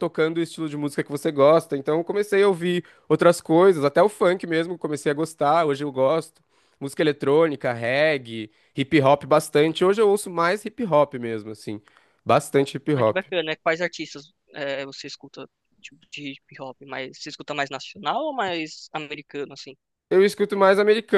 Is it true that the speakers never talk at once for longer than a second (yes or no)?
yes